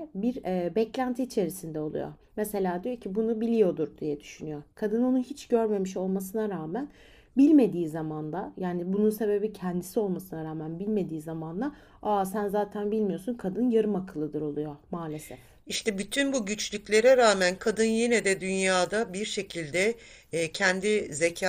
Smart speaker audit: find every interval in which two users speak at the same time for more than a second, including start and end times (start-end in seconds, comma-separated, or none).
none